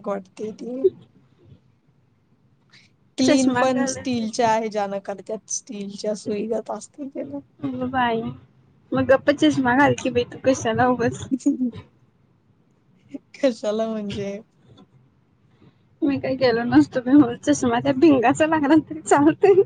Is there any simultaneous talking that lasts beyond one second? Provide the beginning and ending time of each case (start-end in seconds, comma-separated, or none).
3.2-4.5